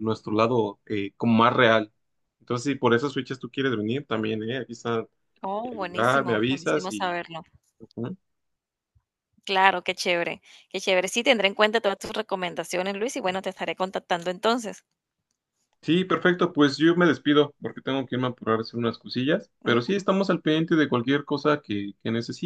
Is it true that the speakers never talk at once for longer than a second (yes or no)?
no